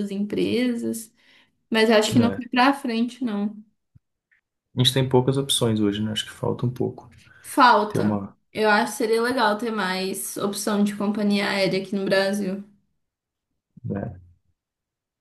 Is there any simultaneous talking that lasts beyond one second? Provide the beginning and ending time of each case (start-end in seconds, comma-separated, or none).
none